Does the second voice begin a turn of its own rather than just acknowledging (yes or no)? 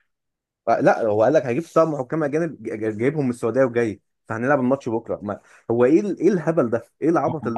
yes